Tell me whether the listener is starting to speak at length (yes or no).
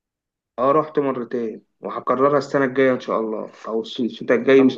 yes